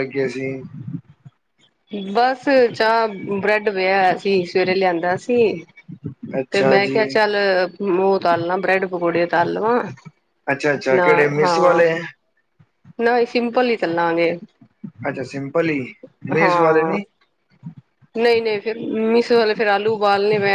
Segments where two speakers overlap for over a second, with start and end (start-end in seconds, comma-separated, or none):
none